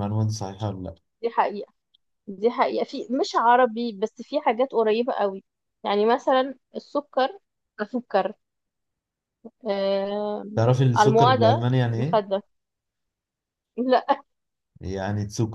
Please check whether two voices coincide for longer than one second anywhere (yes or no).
yes